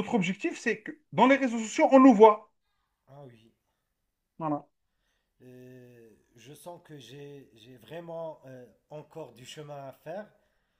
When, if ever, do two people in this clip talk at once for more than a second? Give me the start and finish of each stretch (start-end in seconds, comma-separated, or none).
none